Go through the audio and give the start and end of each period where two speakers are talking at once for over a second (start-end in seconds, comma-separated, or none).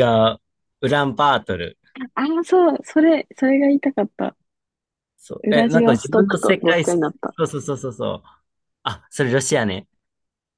5.4-7.0